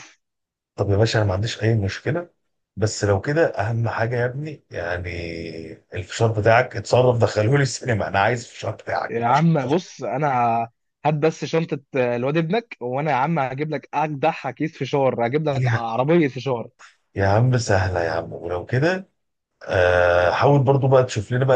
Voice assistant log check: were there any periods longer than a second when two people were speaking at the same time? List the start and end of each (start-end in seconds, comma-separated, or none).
none